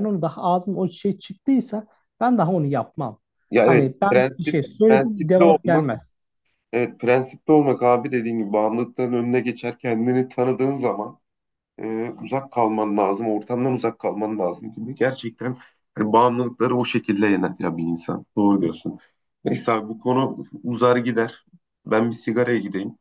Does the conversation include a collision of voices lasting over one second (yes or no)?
yes